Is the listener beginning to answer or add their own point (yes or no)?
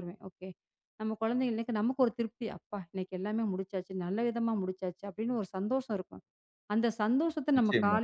no